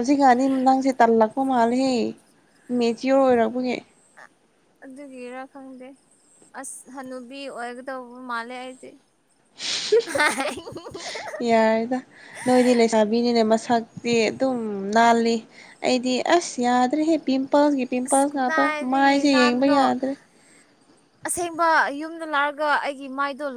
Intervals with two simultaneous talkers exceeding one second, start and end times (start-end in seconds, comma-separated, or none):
18.1-19.8